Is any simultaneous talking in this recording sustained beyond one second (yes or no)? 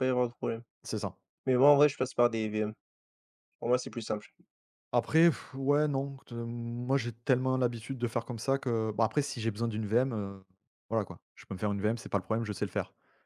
no